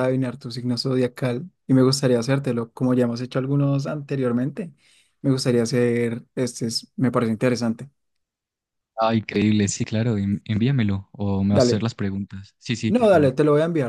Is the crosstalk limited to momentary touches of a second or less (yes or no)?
yes